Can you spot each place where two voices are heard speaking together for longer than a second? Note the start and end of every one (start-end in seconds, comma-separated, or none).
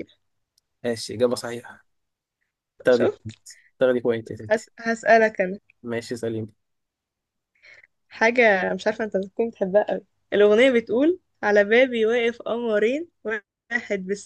none